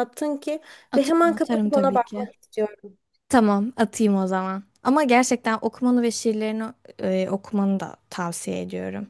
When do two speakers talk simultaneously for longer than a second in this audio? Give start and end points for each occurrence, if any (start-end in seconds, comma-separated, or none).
0.9-2.3